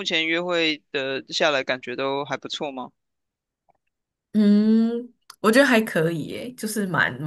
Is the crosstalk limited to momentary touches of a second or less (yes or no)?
yes